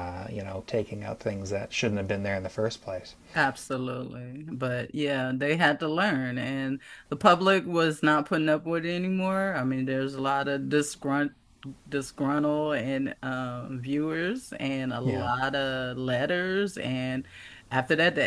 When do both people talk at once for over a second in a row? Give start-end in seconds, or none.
none